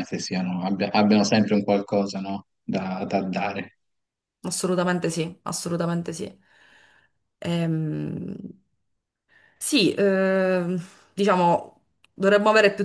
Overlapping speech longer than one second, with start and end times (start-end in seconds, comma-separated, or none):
none